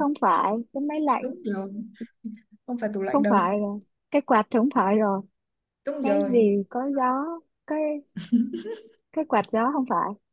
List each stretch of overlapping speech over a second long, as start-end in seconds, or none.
none